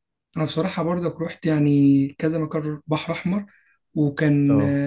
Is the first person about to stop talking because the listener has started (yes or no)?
no